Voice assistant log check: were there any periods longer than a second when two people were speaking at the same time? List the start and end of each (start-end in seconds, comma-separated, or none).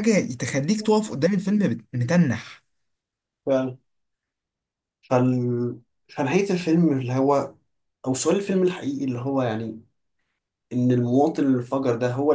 none